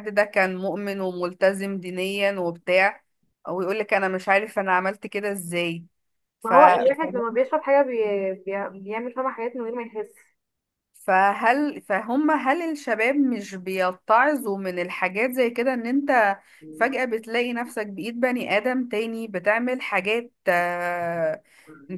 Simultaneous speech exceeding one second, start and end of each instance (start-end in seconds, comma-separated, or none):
none